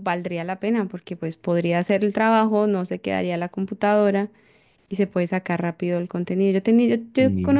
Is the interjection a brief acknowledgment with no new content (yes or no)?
yes